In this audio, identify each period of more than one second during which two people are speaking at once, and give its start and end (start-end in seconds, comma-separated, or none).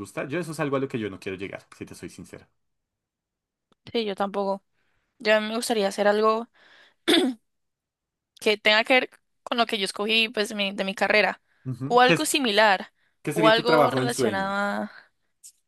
13.3-14.6